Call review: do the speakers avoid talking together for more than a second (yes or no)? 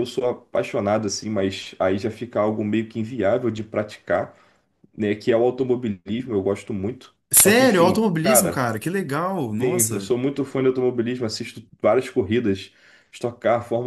no